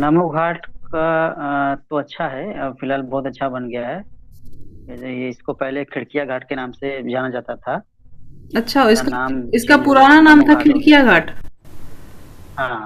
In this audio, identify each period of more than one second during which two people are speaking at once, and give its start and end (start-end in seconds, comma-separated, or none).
8.8-11.1